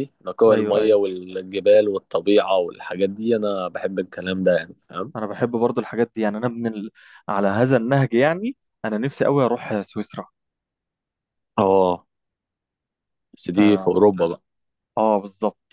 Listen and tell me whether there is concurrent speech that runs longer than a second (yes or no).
no